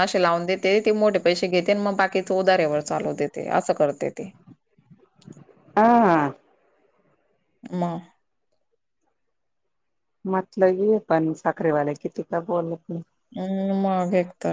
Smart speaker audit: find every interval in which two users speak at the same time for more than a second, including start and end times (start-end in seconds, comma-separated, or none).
none